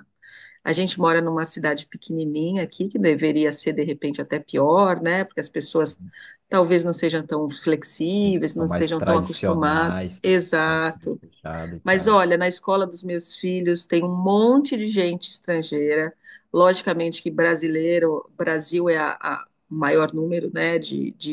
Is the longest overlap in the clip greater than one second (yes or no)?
yes